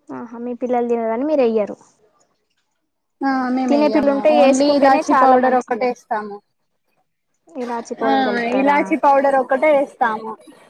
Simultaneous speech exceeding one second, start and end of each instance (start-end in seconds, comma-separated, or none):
3.7-5.8